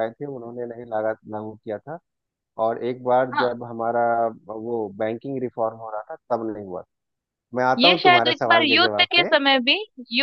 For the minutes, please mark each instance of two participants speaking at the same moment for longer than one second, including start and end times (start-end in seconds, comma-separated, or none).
7.8-9.3